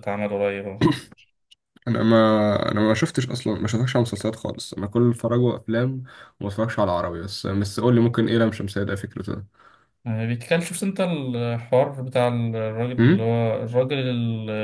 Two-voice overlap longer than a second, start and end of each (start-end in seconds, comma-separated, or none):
none